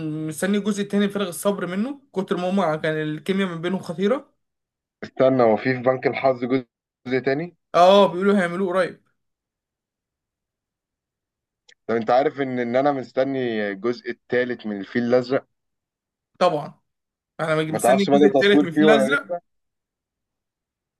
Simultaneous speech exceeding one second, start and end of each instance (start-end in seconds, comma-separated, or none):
17.7-19.2